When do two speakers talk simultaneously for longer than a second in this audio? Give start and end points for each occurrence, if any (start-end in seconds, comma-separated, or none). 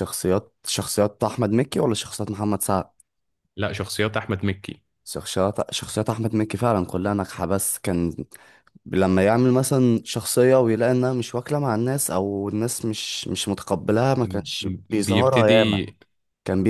14.2-15.8